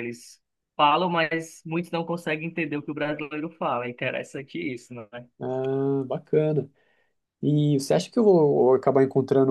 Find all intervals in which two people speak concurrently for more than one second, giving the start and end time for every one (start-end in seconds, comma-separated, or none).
none